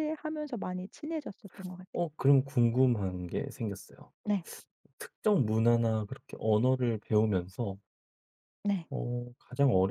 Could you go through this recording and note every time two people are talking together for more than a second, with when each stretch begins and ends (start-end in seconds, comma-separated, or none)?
none